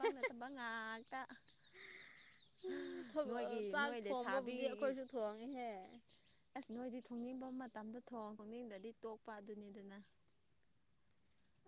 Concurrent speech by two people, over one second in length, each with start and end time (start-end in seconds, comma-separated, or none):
3.3-4.9